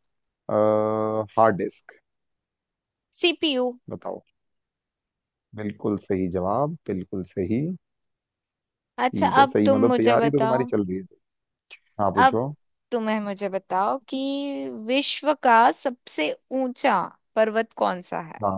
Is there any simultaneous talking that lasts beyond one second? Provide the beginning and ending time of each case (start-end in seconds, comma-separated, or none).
9.1-10.7